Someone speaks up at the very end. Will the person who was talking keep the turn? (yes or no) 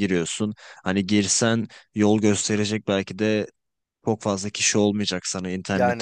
yes